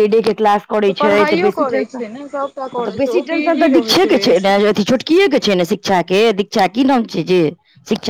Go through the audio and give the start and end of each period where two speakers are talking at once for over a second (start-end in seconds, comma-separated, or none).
1.0-4.5